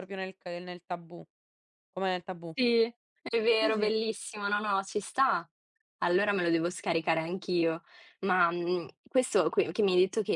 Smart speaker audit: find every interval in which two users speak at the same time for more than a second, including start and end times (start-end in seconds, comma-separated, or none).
none